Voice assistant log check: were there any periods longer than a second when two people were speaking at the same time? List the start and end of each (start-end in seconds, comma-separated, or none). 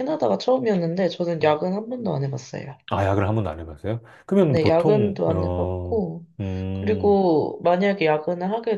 4.4-6.0